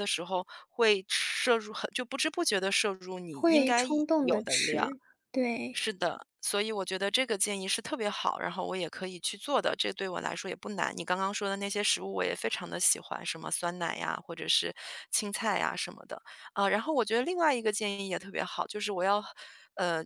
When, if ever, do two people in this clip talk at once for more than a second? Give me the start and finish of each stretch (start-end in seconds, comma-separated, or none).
3.3-5.0